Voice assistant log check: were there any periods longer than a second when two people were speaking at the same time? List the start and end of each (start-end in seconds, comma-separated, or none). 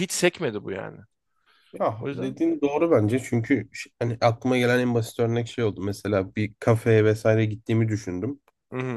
none